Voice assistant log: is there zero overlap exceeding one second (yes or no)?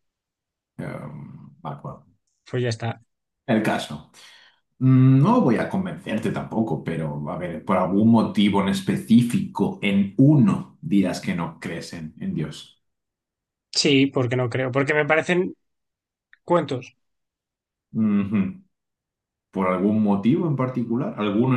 yes